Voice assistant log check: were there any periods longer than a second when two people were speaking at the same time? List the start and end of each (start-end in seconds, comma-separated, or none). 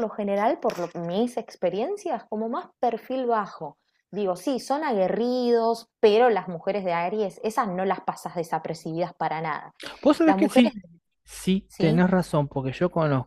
none